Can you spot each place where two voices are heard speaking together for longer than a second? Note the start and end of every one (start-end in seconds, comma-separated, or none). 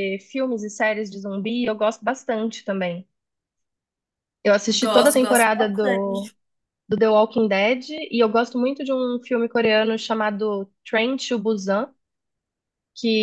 4.7-6.3